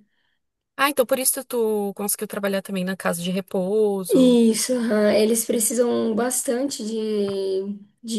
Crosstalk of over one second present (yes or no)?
no